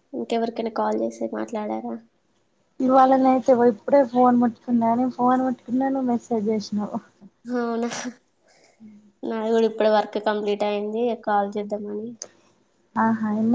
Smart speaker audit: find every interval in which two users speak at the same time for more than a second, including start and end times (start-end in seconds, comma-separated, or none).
none